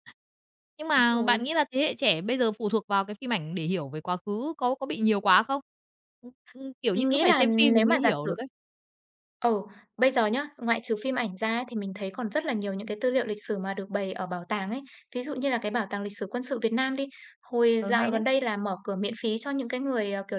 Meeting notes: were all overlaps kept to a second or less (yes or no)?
no